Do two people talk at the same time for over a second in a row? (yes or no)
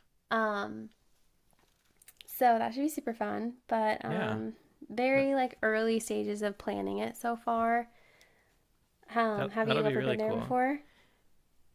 yes